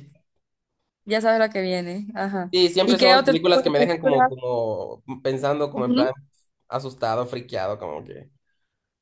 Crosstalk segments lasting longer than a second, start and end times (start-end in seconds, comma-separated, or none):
2.5-4.3